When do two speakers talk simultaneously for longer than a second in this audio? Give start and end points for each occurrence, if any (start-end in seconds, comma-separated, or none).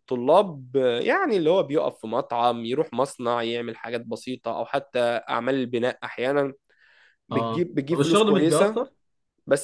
7.3-8.8